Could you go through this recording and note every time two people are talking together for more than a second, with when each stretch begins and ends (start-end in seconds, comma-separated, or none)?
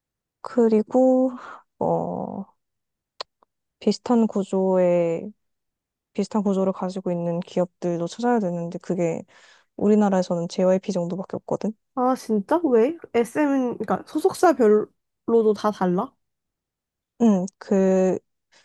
none